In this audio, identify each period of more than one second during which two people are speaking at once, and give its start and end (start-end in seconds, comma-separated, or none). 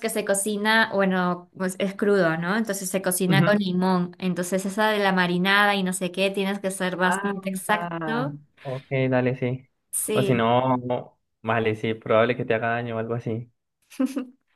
7.0-8.3